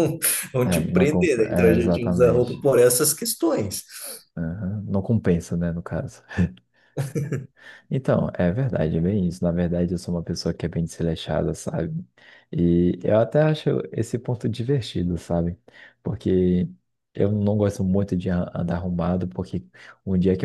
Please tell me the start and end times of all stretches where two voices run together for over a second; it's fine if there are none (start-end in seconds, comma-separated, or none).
0.6-2.6